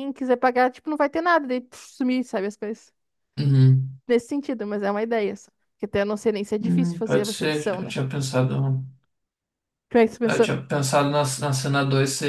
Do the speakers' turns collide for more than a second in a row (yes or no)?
yes